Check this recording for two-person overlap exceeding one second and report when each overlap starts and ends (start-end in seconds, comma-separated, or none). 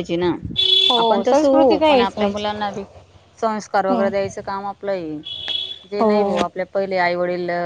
1.0-2.4